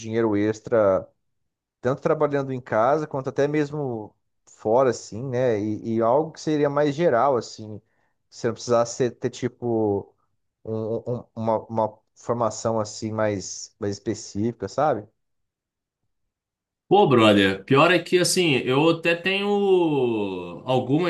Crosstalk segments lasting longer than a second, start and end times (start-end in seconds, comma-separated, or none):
none